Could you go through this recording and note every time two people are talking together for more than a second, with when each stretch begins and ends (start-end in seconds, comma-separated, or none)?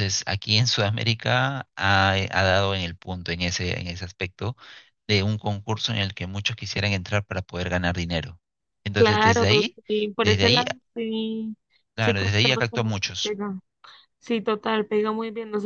12.0-13.4